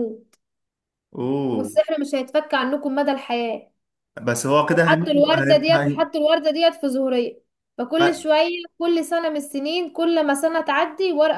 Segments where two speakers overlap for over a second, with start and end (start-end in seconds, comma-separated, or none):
4.7-6.0